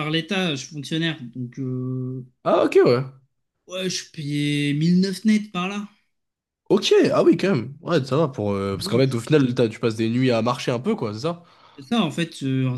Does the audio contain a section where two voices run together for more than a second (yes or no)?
no